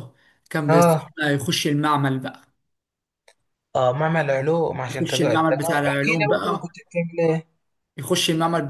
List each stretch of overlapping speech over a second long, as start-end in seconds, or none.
4.9-6.7